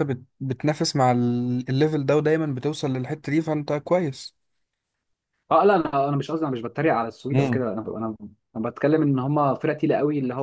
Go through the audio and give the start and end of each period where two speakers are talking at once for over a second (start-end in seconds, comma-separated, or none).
none